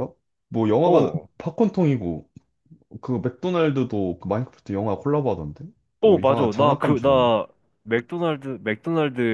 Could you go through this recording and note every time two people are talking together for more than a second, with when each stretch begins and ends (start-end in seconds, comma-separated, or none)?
6.0-7.3